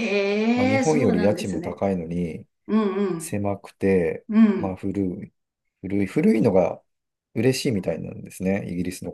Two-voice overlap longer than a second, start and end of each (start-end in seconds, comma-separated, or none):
0.5-1.8